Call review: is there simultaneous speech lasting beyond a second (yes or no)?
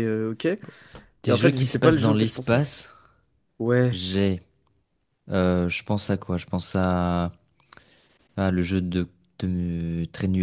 yes